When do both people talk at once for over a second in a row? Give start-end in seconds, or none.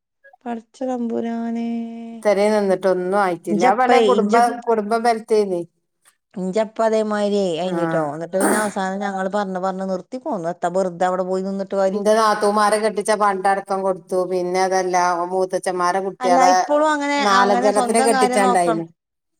17.3-18.8